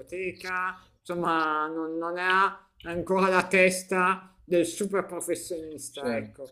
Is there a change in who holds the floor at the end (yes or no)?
yes